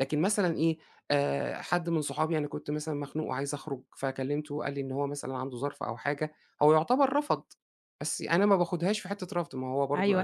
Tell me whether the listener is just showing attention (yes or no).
no